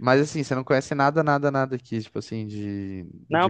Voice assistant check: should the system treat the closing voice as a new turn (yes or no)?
yes